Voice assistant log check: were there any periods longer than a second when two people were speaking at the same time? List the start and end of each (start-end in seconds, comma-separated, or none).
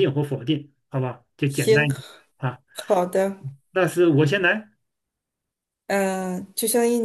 none